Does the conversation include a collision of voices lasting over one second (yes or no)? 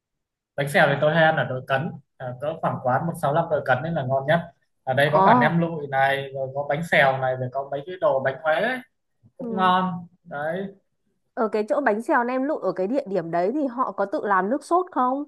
no